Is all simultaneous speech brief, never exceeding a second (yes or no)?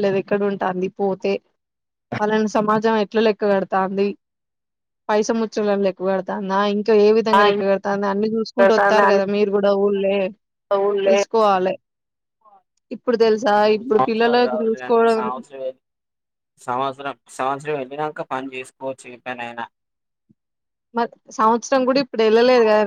no